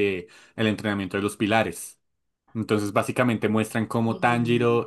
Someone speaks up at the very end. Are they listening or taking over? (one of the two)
listening